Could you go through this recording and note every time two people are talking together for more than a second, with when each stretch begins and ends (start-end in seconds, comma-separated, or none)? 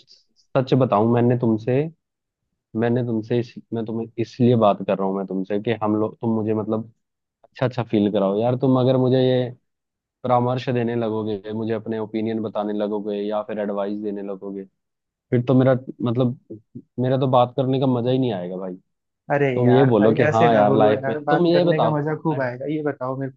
19.6-22.0